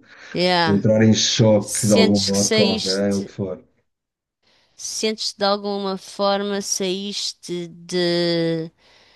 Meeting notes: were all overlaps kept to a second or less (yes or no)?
no